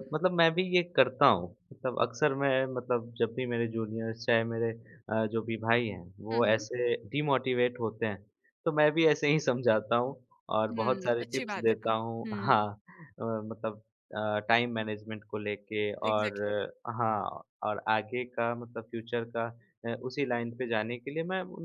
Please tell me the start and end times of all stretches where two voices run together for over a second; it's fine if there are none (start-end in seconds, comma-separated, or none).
10.6-12.5